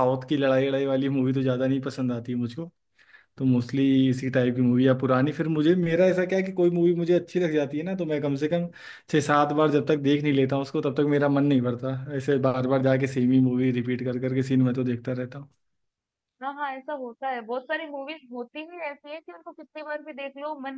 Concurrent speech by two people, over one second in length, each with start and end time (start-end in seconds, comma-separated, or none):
none